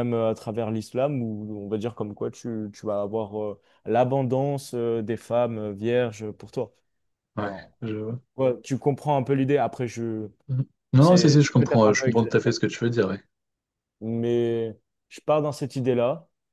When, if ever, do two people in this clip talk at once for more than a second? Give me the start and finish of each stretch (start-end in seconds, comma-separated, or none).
11.0-12.4